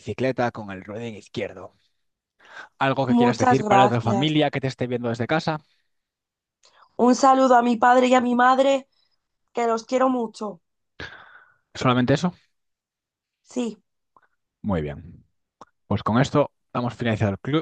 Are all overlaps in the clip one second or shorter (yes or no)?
no